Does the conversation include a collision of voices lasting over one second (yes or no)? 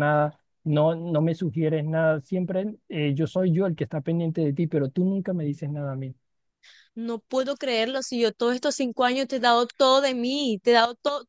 no